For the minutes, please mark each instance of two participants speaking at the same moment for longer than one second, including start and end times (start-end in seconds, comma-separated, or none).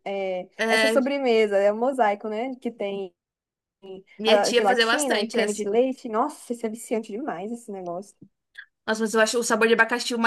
4.2-5.6